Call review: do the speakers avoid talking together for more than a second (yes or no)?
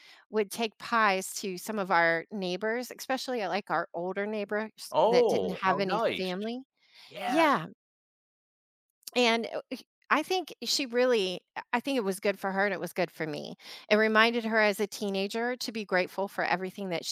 no